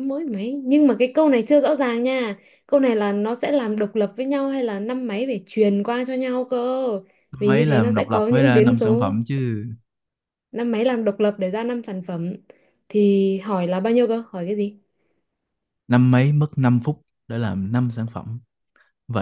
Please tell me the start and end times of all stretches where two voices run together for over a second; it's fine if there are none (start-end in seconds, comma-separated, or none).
7.5-9.2